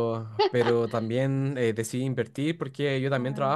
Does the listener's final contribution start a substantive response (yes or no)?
no